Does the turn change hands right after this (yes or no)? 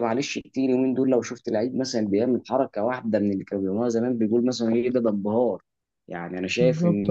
yes